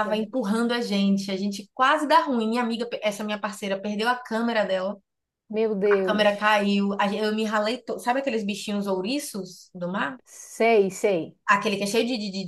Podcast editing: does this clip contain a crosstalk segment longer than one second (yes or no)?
no